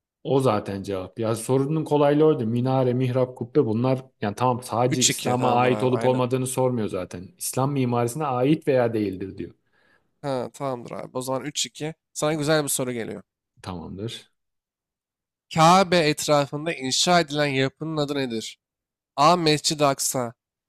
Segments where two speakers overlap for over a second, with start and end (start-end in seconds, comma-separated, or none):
4.9-6.2